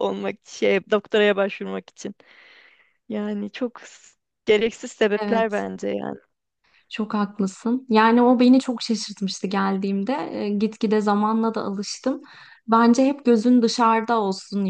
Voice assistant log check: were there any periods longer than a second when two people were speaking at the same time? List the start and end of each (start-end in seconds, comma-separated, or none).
none